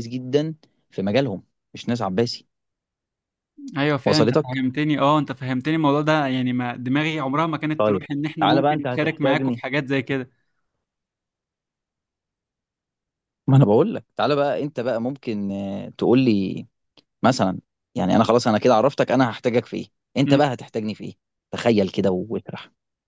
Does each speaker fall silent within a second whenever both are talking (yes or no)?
no